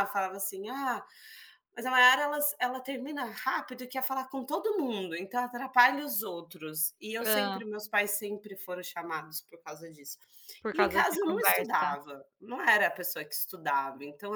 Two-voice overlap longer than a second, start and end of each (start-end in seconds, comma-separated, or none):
10.7-12.0